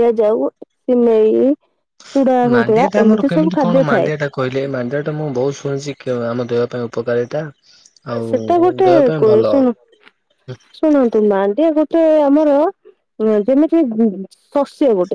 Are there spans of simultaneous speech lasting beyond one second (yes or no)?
yes